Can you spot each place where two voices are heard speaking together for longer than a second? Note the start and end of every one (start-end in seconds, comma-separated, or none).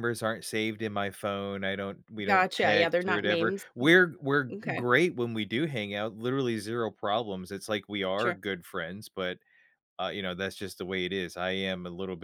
2.2-3.6